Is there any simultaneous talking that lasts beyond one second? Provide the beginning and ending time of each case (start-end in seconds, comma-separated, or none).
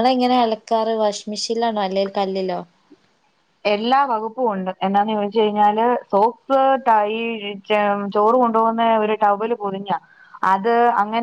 none